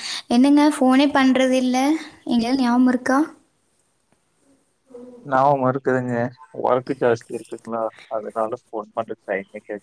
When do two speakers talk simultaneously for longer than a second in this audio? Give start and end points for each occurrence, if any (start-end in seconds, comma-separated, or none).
none